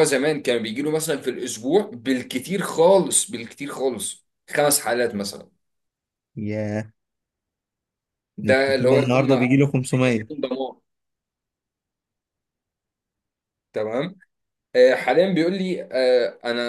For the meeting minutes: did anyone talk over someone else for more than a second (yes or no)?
yes